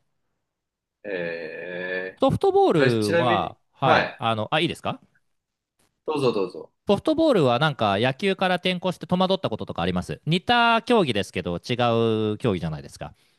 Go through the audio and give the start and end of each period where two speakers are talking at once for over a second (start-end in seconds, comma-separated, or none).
2.8-4.2